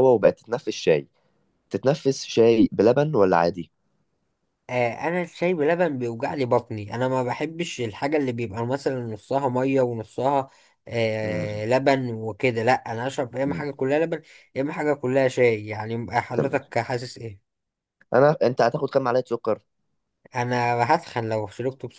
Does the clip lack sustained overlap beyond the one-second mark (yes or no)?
yes